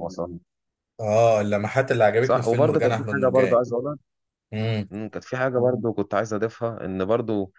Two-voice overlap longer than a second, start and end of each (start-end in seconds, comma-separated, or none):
2.2-3.6